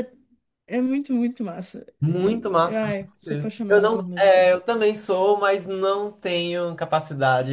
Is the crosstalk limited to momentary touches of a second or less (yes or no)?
no